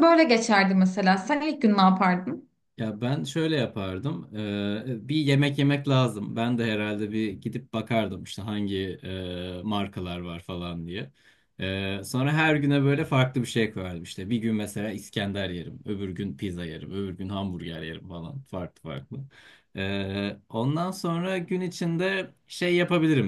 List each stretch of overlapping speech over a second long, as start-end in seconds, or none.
none